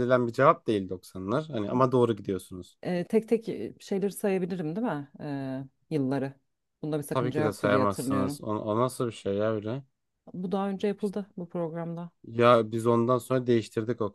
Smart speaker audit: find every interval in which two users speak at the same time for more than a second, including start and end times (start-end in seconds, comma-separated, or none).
7.1-8.4